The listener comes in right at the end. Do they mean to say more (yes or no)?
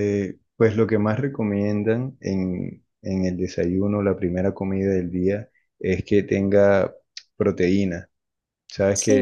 no